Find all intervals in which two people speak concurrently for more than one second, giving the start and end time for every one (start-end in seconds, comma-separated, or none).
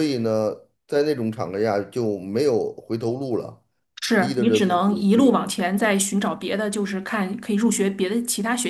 4.2-5.4